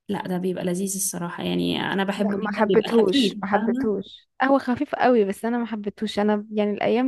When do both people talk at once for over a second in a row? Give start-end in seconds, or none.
2.1-3.9